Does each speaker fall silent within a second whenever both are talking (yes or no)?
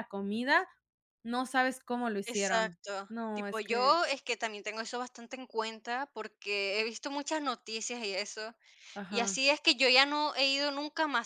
no